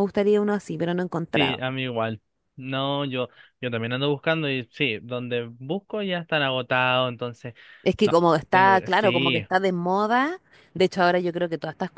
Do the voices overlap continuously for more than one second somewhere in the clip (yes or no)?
yes